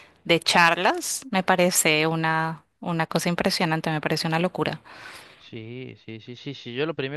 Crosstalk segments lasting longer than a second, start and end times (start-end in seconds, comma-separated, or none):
none